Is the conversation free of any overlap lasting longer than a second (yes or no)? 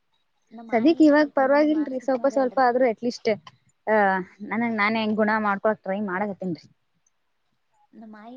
no